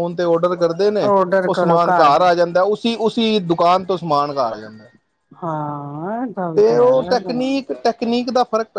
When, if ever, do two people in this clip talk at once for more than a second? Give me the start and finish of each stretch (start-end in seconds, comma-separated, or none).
none